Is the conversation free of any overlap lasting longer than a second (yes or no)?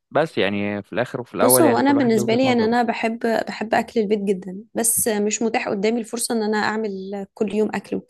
no